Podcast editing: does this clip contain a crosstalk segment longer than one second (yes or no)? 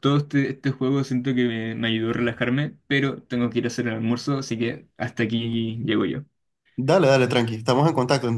no